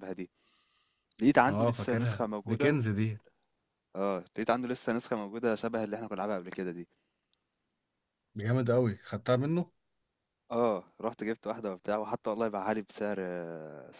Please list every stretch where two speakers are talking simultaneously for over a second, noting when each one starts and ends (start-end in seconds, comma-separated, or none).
1.5-2.8